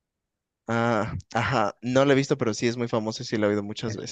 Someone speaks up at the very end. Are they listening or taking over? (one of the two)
taking over